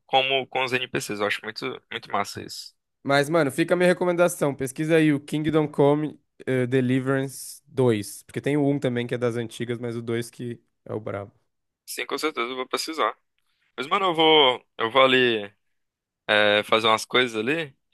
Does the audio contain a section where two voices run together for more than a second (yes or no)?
no